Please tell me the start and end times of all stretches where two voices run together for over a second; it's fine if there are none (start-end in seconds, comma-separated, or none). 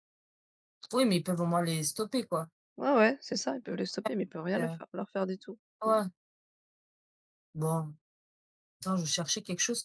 none